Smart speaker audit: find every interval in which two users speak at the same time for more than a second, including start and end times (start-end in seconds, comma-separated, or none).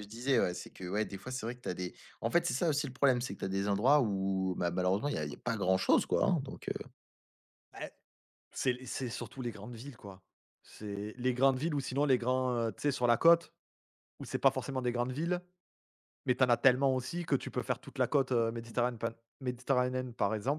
none